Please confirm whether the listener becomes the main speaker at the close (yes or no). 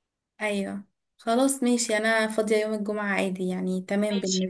yes